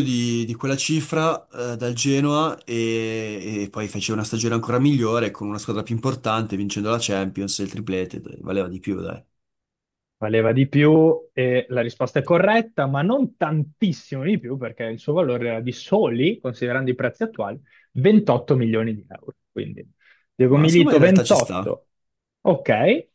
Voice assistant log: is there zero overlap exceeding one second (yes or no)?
no